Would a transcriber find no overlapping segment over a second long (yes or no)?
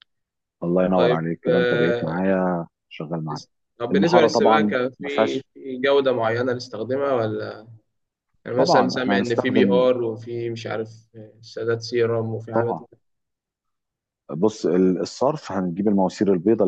no